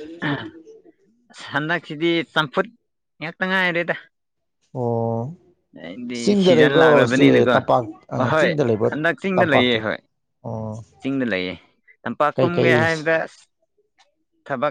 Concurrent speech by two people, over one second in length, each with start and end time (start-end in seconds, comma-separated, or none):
6.1-7.6